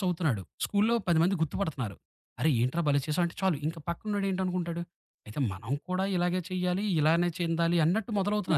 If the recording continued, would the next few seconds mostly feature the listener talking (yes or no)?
yes